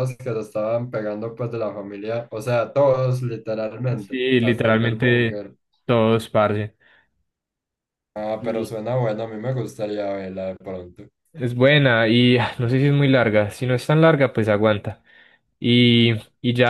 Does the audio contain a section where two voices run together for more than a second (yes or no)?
yes